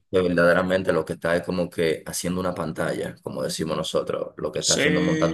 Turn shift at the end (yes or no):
yes